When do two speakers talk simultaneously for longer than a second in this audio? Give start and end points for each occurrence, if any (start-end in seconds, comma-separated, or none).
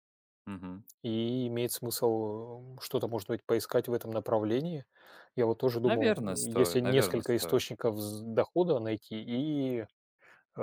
5.8-7.6